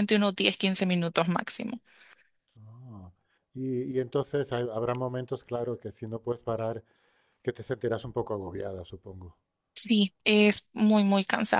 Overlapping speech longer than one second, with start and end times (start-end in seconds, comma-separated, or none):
none